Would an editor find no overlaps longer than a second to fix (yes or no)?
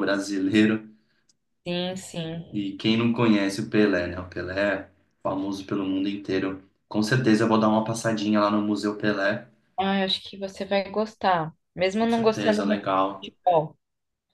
no